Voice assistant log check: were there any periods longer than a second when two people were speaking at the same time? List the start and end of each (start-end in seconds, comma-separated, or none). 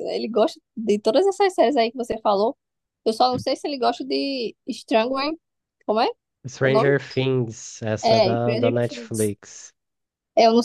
8.0-9.3